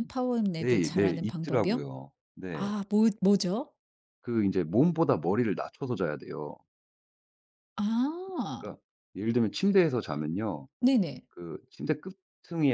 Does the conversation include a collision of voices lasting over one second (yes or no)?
yes